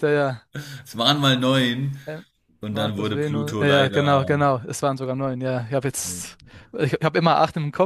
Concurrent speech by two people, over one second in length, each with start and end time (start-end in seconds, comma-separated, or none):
2.7-4.3